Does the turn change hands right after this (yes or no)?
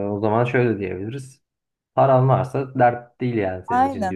yes